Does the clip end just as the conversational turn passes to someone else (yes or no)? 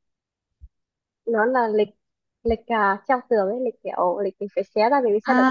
yes